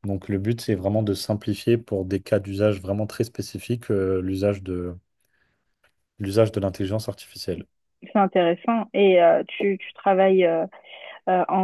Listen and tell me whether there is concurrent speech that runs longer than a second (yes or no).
no